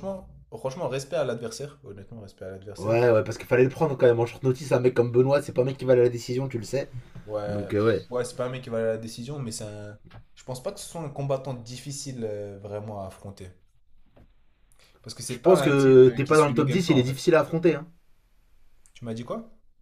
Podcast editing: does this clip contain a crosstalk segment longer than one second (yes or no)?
yes